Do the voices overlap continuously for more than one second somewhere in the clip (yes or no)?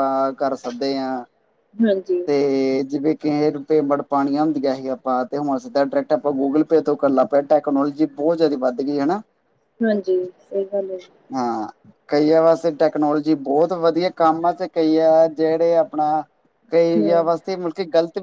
no